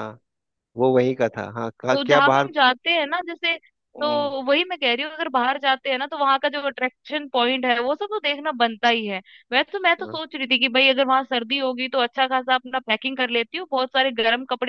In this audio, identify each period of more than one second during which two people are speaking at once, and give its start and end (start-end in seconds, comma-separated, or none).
none